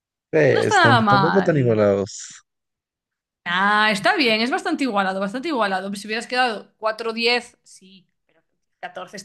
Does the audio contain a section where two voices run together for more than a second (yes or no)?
yes